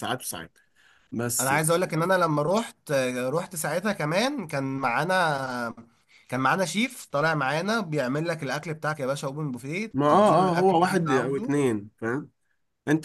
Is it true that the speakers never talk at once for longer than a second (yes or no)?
no